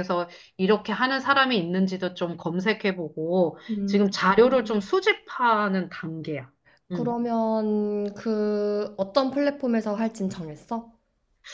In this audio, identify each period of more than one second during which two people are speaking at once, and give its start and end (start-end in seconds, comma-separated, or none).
none